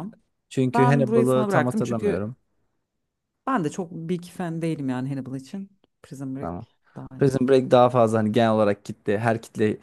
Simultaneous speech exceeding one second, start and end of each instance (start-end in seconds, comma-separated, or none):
0.7-2.3